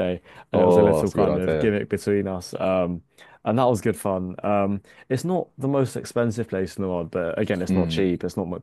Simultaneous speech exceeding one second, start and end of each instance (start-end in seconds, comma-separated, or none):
0.5-1.7